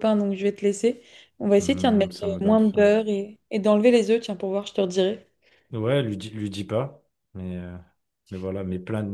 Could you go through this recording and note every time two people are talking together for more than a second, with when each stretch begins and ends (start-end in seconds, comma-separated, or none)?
1.6-2.9